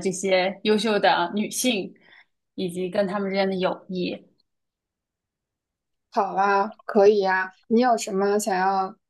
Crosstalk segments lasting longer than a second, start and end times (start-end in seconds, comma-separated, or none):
none